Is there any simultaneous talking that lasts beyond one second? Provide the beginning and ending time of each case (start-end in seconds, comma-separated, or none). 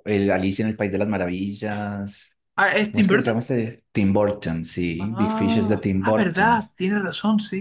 5.0-6.6